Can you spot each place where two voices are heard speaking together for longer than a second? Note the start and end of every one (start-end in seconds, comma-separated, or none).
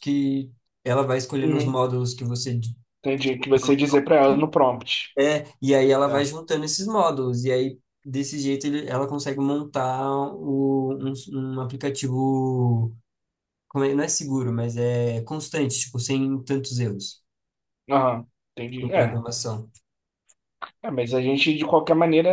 none